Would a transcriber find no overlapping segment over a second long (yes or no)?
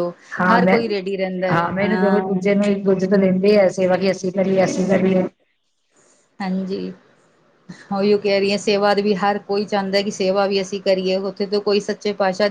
yes